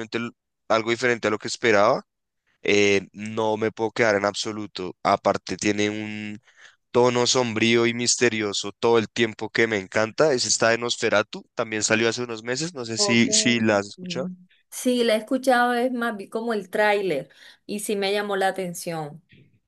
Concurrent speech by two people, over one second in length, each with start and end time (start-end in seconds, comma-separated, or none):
12.9-14.3